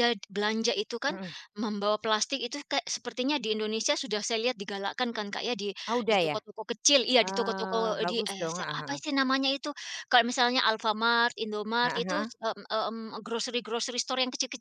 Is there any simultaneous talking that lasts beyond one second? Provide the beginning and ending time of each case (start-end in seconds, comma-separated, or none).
7.2-9.0